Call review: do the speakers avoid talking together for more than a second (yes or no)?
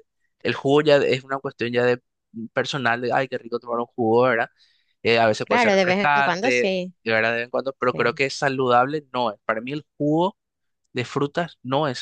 no